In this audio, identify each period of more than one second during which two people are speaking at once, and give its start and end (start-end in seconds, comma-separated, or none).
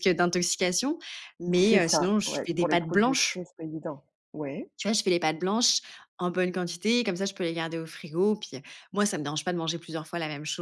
1.6-3.4